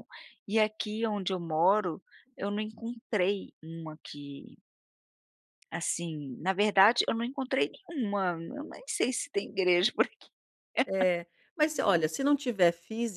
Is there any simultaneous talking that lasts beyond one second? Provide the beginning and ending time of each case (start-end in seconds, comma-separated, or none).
none